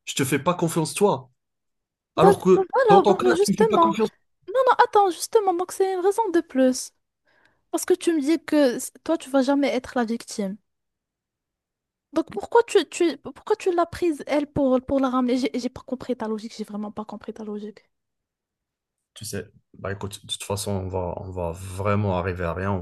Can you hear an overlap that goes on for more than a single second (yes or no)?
yes